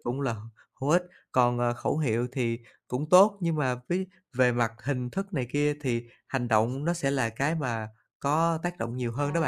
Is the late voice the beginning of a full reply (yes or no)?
yes